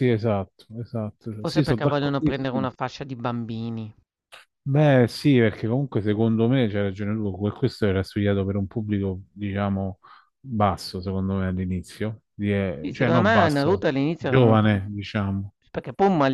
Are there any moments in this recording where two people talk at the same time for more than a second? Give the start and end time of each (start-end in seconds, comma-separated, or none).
1.4-2.7, 12.8-14.7